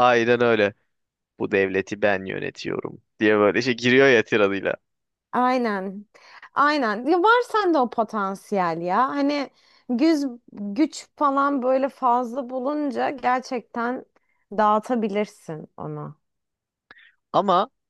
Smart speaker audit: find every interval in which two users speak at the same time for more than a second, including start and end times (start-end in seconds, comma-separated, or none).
none